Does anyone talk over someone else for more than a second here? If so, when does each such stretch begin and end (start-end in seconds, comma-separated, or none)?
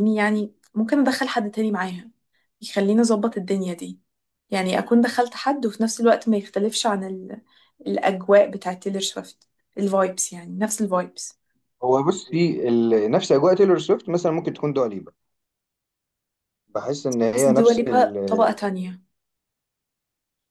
17.3-18.5